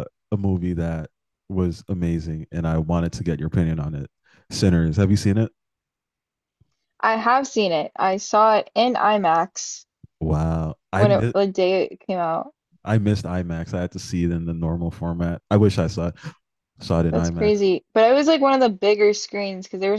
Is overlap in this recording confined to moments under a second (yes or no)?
yes